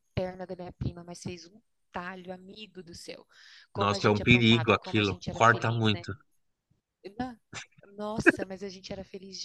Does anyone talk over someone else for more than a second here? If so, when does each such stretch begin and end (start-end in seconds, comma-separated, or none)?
3.8-6.1